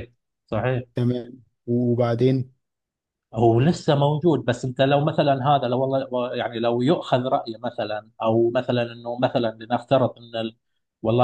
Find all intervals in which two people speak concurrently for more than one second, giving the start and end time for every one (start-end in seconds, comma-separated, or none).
none